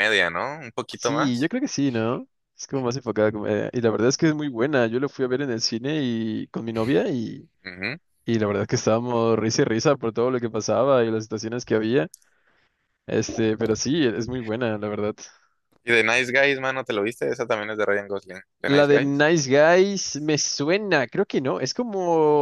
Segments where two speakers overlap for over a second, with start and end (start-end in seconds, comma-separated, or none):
none